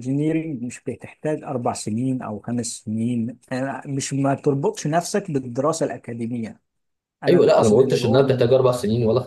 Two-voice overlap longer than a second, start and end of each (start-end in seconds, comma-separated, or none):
7.3-8.7